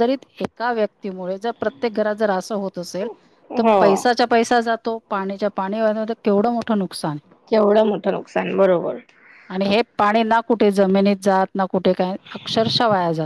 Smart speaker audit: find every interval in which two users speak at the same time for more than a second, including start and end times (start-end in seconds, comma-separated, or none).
none